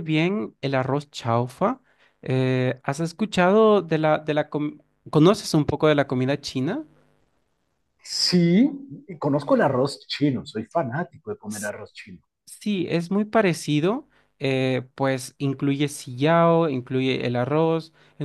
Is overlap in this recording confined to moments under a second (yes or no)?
yes